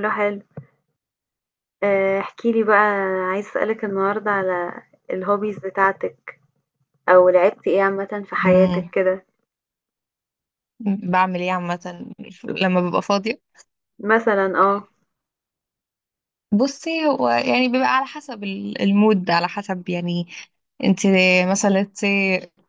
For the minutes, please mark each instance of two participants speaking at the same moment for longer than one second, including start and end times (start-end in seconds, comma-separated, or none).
none